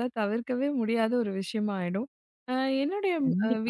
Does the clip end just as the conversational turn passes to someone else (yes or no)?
no